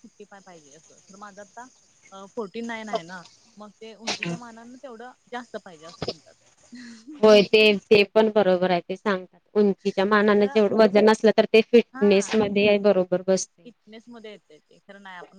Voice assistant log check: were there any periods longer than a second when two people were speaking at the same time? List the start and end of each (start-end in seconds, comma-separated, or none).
none